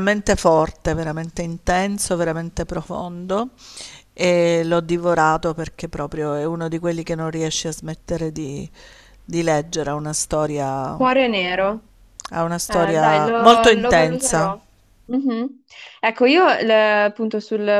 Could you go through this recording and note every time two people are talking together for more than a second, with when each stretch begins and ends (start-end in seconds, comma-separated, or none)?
12.7-14.5